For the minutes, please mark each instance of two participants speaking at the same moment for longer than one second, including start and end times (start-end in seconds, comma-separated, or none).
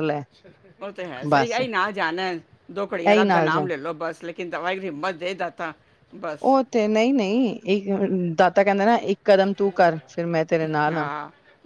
none